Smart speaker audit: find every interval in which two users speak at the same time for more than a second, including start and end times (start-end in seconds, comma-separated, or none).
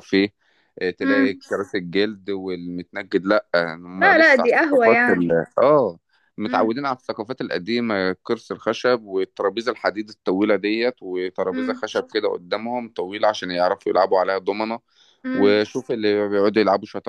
4.0-5.3